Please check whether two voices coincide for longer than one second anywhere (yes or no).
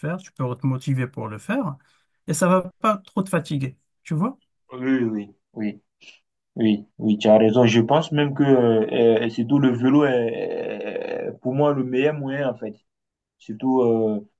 no